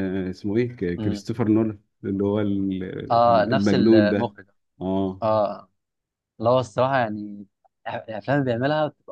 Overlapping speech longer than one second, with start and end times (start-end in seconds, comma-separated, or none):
3.1-4.3